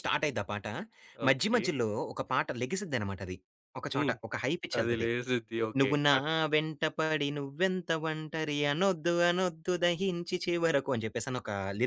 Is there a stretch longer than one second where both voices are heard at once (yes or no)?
no